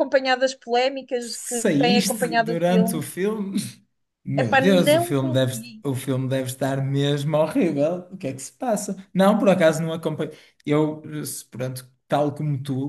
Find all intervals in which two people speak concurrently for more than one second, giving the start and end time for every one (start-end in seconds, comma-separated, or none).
1.2-3.0, 4.3-5.8